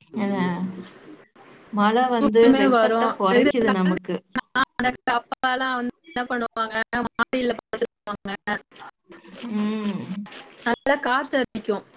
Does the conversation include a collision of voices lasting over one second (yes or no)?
no